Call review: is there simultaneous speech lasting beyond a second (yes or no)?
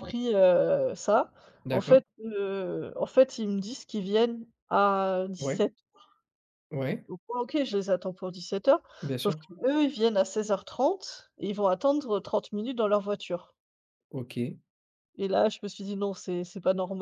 no